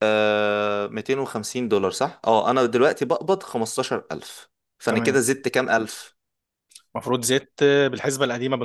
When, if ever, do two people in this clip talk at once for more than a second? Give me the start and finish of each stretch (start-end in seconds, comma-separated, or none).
none